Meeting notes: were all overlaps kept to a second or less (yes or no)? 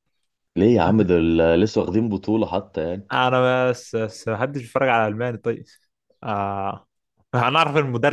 yes